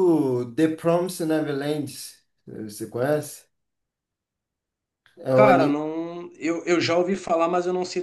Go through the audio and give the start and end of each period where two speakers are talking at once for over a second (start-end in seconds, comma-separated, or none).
none